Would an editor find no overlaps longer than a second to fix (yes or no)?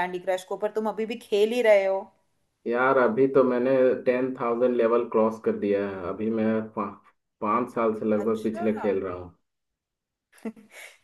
yes